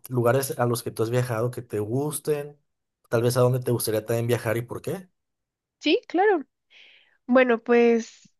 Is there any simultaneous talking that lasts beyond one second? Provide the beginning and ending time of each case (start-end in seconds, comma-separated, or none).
none